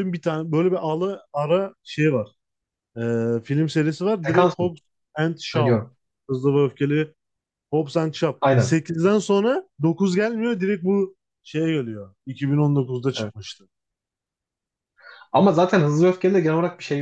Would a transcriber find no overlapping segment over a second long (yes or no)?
yes